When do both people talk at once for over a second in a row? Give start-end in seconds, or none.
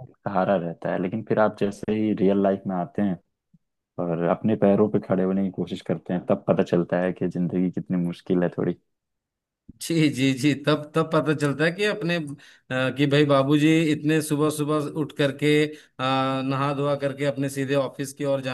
none